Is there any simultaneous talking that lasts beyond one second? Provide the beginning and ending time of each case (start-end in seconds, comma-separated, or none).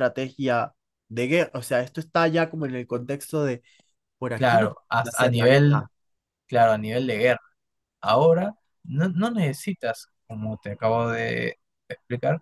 4.3-5.9